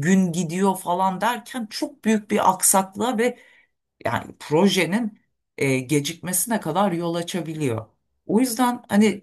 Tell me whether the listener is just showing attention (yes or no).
yes